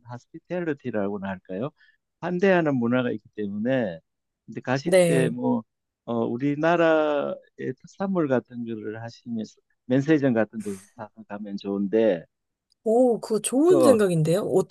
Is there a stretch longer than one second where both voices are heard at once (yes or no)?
no